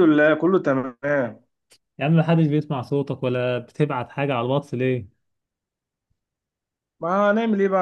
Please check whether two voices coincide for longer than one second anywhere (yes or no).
no